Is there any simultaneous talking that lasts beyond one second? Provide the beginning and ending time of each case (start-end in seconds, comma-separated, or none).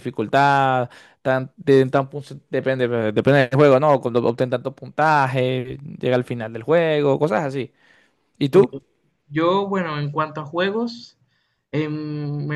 none